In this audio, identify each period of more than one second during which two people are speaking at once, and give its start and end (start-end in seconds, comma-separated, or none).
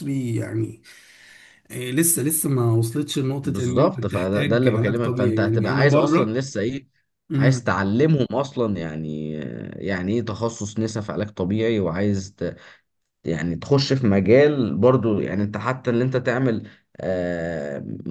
3.4-6.4